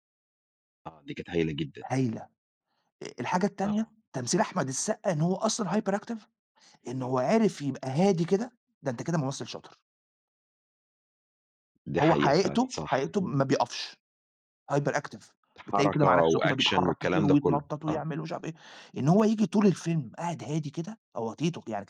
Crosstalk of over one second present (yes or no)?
yes